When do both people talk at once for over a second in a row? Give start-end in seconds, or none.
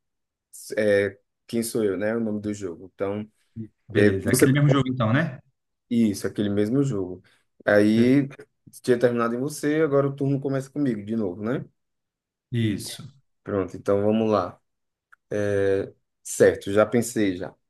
none